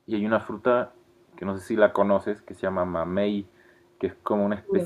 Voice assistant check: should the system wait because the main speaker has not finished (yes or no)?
yes